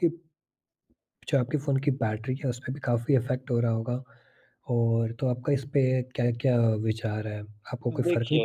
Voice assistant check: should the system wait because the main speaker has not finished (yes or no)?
yes